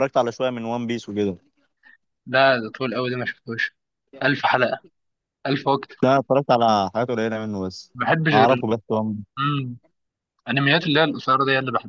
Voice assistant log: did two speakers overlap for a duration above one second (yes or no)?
no